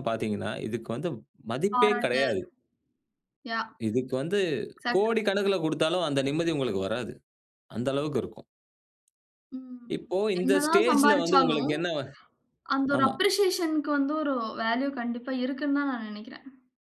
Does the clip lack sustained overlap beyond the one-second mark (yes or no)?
no